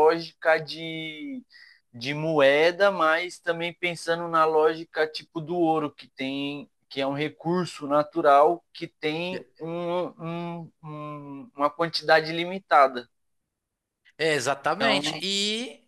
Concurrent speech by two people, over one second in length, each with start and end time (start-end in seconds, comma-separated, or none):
none